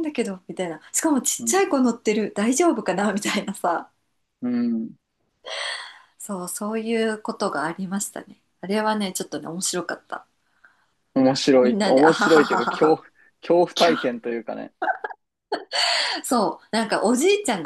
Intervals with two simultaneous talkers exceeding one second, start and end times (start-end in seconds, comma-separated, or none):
11.6-13.0